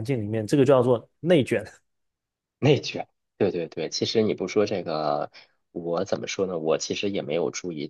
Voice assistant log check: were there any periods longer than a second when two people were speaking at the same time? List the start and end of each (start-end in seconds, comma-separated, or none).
none